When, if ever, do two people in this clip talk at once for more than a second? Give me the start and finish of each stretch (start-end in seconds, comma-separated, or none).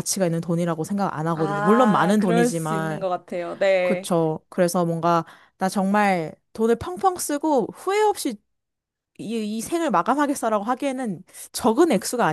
1.3-3.0